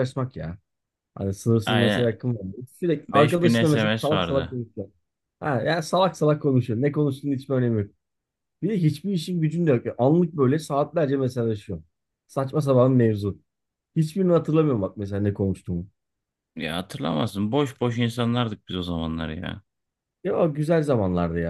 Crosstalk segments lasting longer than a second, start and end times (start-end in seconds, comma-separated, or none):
3.1-4.6